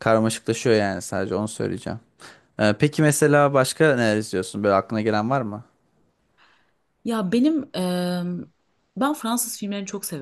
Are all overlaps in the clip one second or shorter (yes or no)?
yes